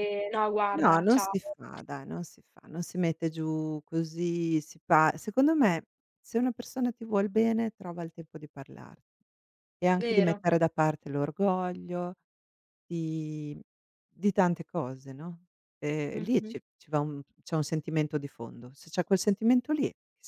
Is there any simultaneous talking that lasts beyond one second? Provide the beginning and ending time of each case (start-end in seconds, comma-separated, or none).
none